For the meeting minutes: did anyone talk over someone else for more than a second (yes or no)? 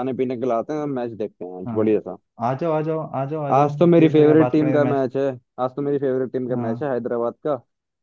yes